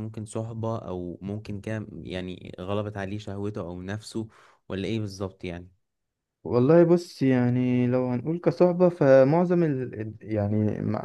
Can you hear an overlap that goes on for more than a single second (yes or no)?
no